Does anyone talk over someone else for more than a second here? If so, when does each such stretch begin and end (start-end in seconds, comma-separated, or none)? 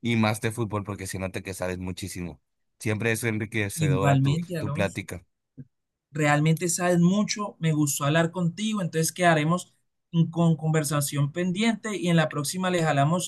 3.8-5.0